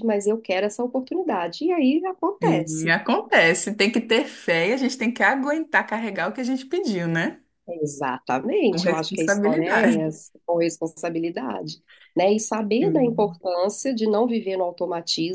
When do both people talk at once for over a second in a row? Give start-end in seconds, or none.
8.7-10.1